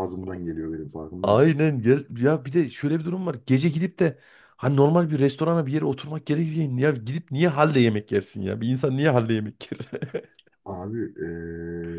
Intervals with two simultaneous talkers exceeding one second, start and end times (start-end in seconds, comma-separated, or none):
none